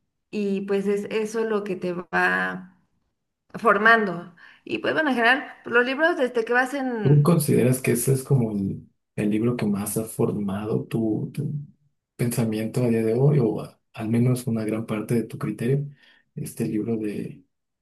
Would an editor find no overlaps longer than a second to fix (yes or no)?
yes